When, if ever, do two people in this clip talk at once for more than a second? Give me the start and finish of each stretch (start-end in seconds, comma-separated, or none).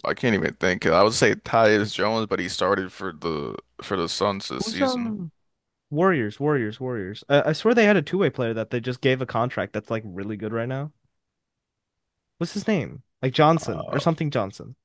none